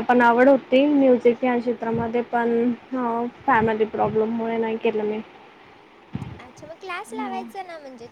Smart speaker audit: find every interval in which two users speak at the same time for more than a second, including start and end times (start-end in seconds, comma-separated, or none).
none